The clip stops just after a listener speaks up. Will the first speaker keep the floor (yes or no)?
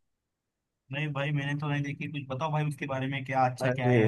yes